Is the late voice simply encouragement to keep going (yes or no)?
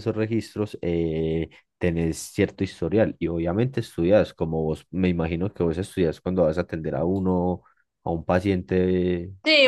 no